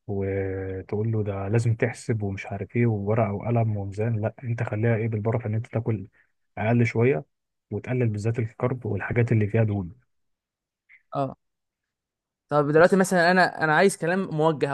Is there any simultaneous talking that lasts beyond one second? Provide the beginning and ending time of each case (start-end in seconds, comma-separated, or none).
none